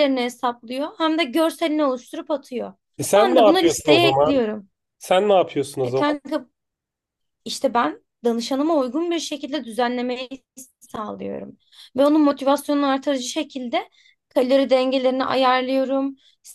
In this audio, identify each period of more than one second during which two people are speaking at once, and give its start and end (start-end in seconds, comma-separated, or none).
3.1-4.4